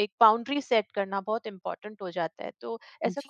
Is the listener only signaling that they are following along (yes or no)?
yes